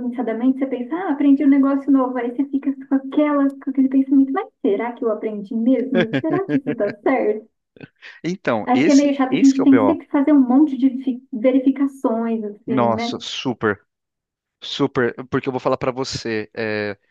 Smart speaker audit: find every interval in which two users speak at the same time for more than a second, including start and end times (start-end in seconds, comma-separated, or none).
8.6-10.0